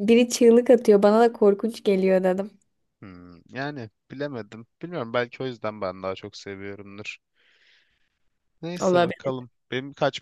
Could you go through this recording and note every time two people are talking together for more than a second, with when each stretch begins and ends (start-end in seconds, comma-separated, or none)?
none